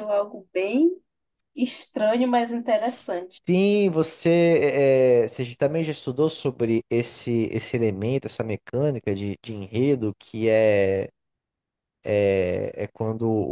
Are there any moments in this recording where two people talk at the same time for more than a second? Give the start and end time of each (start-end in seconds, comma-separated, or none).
none